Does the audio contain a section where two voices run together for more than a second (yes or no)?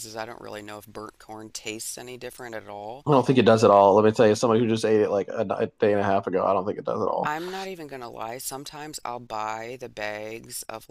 no